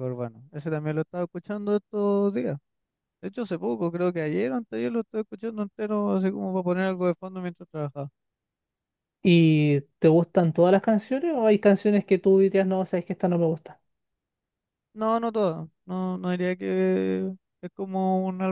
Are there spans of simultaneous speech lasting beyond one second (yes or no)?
no